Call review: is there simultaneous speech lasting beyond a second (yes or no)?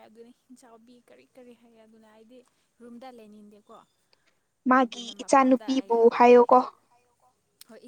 yes